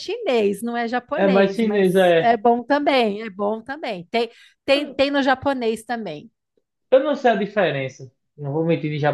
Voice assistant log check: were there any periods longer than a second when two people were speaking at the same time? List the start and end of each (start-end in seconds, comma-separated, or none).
1.1-2.4